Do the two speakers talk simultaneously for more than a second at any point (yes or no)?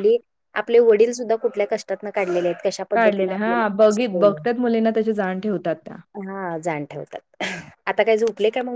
yes